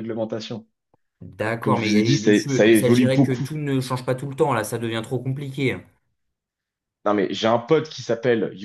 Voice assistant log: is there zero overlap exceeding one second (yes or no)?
no